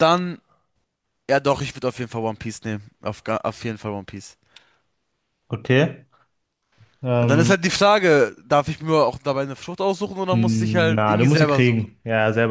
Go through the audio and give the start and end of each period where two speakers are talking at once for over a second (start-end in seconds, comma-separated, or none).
10.3-12.0